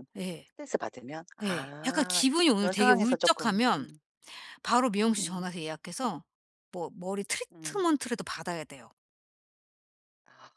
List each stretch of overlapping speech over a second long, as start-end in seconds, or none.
1.4-3.9